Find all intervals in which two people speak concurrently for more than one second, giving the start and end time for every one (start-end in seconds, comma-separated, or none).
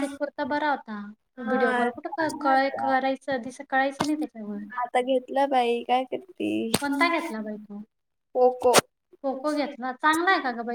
1.5-2.9